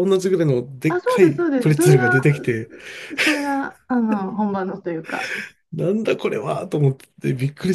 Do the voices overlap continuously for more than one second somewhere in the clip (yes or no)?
yes